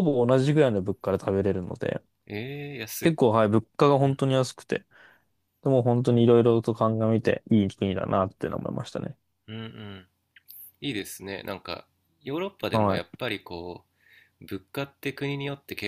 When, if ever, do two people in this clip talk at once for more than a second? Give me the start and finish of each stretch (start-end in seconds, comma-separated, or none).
none